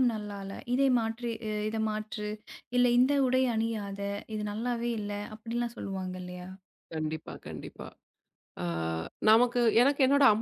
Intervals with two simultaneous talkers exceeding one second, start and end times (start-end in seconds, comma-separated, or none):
none